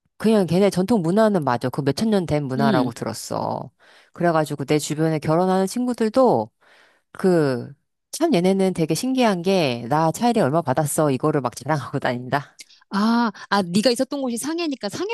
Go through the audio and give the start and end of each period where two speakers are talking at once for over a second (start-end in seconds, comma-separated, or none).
none